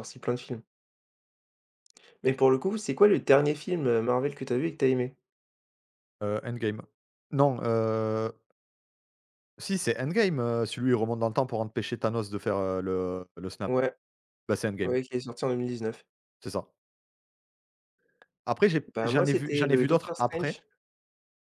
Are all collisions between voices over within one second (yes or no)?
no